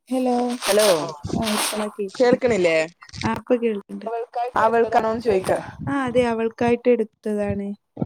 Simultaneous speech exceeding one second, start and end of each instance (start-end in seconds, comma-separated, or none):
none